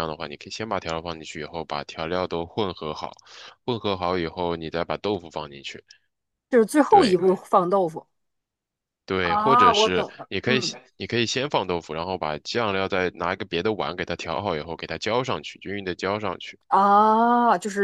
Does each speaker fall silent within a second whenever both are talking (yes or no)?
no